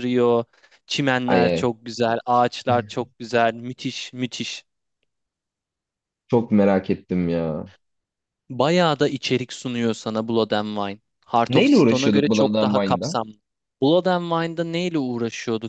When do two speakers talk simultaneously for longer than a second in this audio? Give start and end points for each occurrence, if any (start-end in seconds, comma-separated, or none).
11.5-12.7